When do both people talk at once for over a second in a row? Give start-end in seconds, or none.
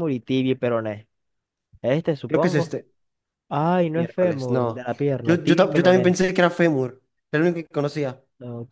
3.9-6.2